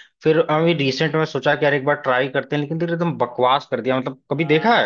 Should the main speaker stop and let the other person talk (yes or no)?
yes